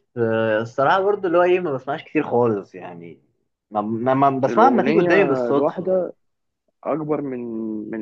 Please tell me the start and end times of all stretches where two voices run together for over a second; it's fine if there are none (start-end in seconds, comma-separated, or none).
4.5-5.9